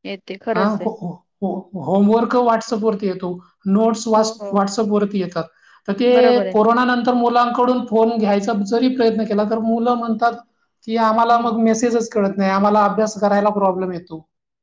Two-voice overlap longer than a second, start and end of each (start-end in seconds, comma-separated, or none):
none